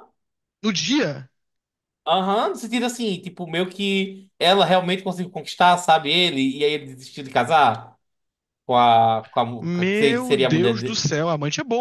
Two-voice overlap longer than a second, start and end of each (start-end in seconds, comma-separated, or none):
9.6-11.0